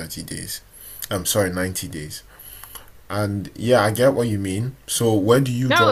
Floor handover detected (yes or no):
yes